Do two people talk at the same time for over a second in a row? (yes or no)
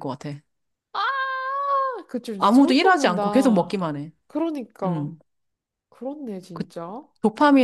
yes